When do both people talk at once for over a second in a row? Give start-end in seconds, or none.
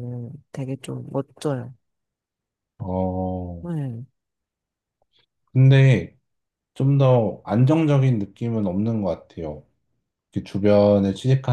none